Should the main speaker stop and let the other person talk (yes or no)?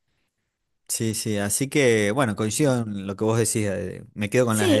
yes